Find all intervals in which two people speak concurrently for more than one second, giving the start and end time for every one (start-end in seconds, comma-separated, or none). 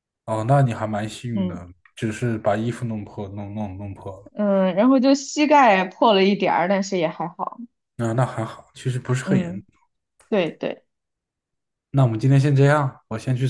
none